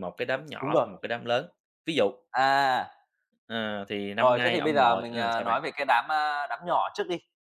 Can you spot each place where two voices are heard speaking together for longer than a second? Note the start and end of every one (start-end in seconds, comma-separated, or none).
4.2-5.6